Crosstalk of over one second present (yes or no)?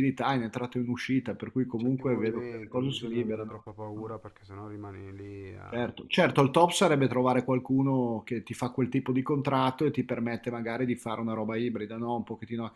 yes